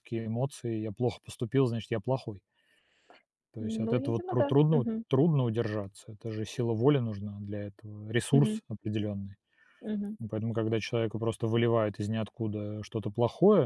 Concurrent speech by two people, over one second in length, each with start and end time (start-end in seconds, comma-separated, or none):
3.6-5.0